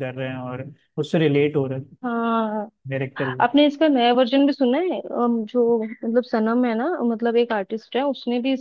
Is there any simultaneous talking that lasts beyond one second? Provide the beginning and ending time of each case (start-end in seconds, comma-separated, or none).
none